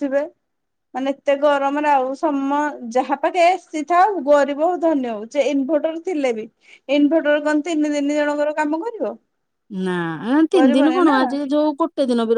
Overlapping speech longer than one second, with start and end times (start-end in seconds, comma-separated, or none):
none